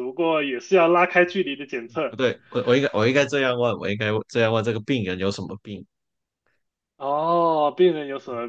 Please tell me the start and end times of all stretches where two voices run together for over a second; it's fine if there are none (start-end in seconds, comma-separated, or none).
none